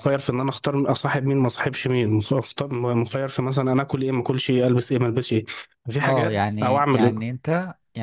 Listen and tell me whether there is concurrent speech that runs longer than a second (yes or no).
yes